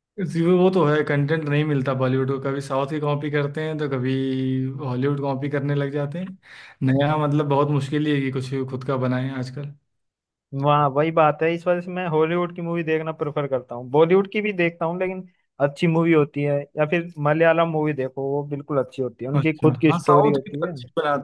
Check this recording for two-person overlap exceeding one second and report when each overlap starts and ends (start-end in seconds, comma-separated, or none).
19.4-20.7